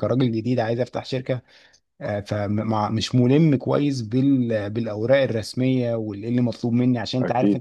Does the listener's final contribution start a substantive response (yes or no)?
no